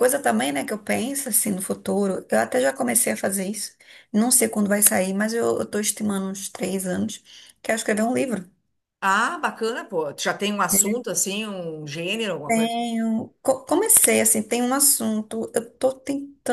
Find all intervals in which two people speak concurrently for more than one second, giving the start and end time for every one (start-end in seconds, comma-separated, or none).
none